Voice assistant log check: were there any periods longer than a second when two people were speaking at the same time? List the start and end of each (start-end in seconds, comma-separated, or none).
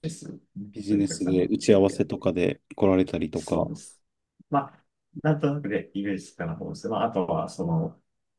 0.8-2.0